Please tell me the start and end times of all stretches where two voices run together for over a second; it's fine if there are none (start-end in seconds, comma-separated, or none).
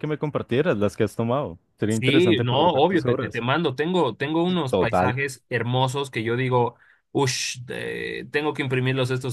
1.9-3.4